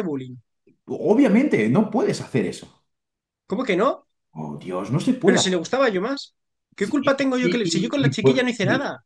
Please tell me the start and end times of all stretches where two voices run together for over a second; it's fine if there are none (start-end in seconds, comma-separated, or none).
6.8-8.4